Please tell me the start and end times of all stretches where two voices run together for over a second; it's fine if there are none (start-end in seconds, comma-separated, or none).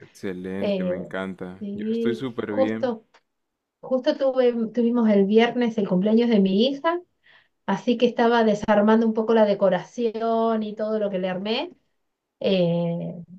1.6-2.9